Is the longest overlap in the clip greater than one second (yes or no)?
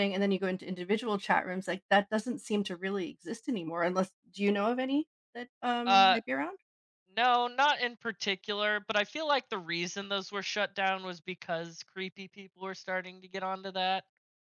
no